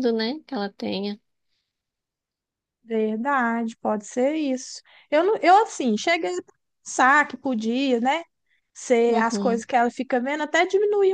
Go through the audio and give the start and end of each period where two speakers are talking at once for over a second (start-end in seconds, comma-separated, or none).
none